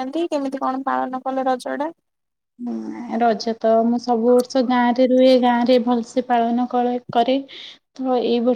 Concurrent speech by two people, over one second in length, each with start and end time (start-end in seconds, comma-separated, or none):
none